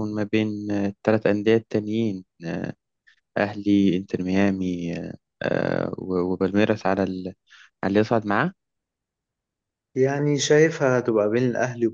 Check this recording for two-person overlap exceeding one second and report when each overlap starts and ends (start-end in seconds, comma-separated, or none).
none